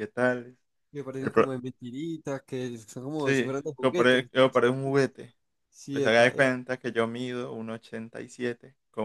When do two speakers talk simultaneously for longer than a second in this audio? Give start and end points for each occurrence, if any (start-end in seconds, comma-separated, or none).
3.2-5.0